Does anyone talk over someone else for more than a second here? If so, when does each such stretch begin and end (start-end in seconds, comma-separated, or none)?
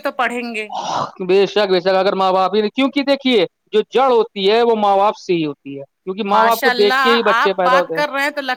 6.3-7.9